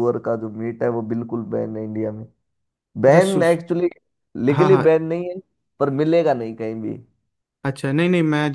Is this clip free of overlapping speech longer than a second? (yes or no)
yes